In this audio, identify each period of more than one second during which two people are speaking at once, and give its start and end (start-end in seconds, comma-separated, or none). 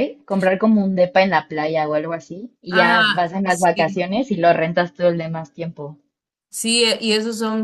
2.7-4.0